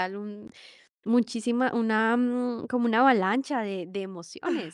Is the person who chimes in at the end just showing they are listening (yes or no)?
no